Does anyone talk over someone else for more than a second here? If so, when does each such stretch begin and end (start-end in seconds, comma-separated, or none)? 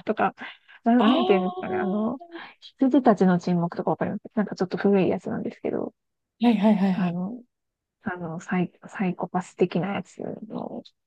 1.0-2.2